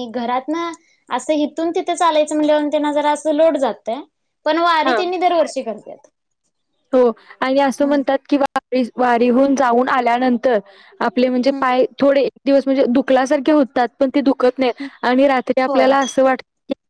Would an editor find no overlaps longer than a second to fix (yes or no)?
yes